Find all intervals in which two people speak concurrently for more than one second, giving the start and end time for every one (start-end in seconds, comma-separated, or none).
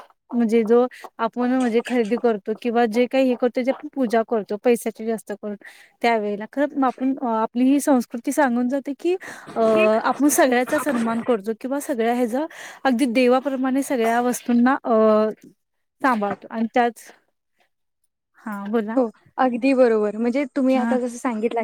none